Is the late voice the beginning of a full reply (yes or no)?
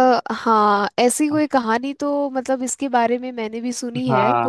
yes